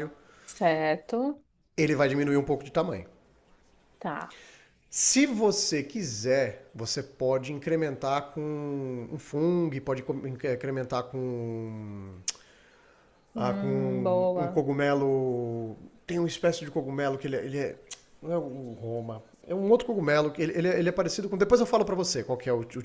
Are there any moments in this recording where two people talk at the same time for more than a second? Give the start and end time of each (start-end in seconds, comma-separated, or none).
13.3-14.6